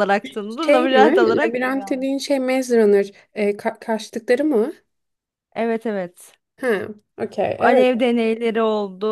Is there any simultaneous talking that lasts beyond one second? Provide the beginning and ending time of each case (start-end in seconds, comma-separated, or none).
0.7-2.1